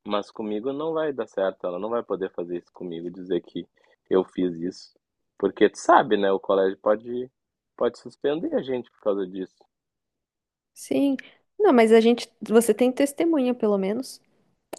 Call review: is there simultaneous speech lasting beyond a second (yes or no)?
no